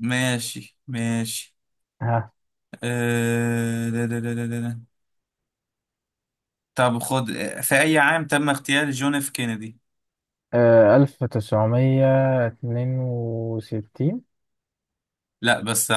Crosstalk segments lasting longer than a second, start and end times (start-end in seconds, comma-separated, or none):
none